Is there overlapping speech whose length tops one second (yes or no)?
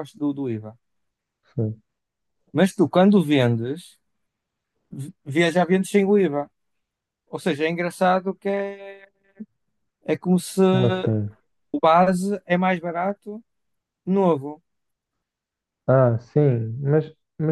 no